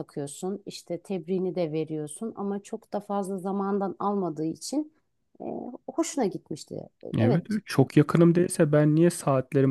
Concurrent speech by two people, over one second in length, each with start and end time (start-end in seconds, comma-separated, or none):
none